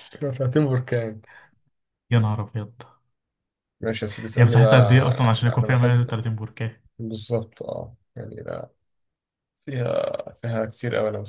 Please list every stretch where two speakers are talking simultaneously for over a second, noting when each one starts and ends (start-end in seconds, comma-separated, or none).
4.3-6.2